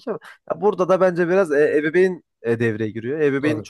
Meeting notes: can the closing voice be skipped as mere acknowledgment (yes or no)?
yes